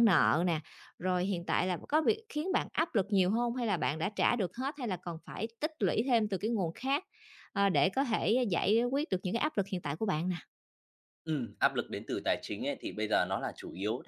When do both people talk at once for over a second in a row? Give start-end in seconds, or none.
none